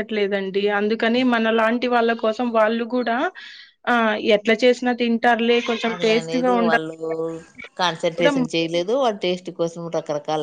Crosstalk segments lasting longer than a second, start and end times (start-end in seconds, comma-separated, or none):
none